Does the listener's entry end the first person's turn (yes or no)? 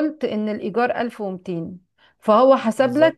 no